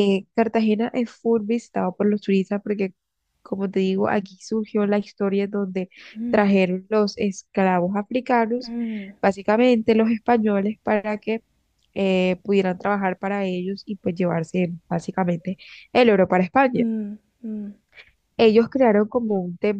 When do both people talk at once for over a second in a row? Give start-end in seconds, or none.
none